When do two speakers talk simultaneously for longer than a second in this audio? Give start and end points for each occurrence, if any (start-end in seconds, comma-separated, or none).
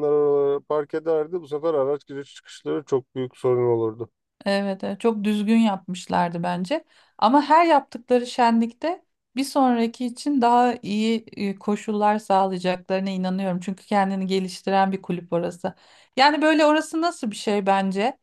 none